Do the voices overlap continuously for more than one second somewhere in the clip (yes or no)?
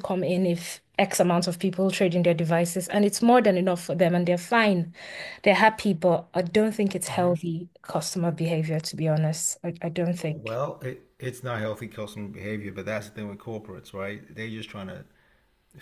no